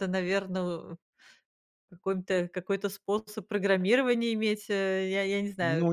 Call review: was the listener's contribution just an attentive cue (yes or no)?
no